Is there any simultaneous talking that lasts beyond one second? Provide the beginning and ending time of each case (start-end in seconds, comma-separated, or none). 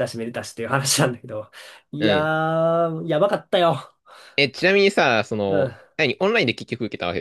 none